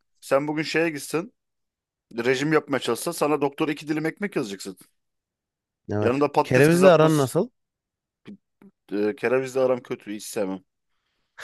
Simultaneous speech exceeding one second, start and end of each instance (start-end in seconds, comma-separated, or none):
6.0-7.3